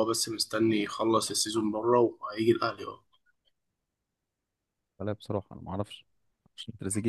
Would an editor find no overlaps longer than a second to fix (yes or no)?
yes